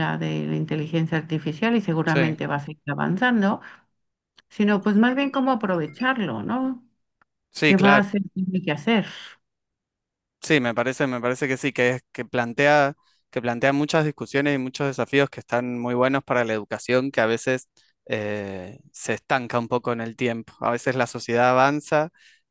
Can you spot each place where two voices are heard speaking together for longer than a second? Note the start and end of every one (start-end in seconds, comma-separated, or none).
none